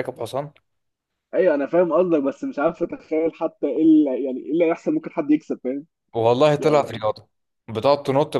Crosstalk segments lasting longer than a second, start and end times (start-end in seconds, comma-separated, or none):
none